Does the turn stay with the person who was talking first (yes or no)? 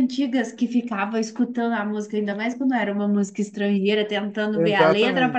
yes